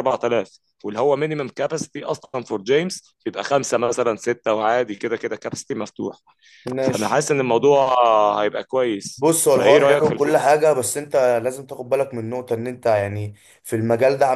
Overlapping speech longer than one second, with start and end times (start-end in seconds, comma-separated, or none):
9.2-10.5